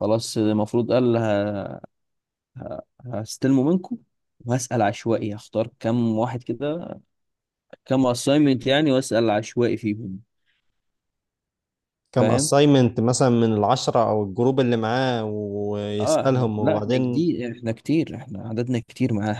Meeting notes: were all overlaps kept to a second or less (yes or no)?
no